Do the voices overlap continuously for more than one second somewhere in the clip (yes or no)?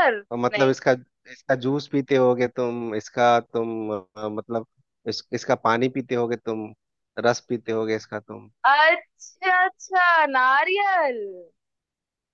no